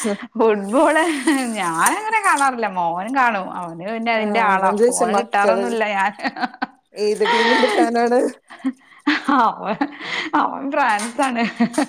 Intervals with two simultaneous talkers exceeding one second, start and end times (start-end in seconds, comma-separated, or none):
4.2-5.6